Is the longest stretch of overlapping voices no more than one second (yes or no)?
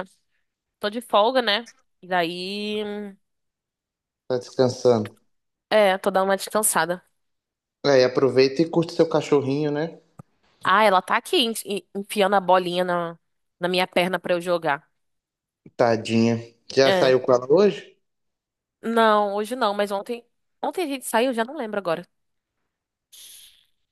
yes